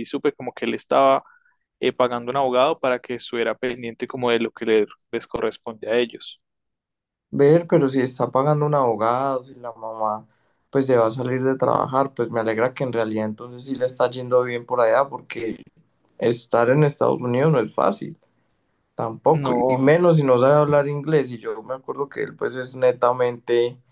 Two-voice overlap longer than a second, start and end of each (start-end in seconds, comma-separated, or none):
none